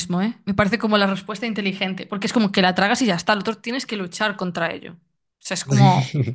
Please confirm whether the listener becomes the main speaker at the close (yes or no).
no